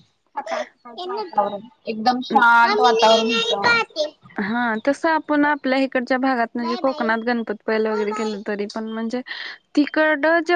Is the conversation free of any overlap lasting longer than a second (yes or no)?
no